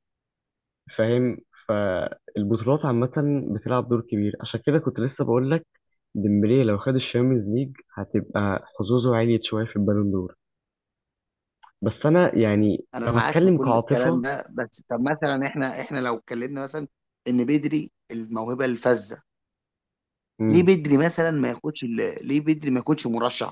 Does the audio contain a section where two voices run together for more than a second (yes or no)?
yes